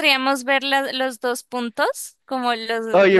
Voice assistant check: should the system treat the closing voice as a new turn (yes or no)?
yes